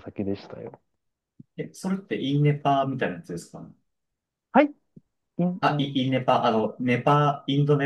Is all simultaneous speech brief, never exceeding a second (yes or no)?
yes